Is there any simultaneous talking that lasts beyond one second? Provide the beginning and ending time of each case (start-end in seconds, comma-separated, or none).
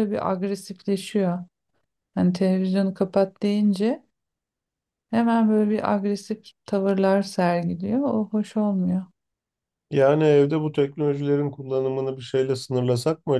none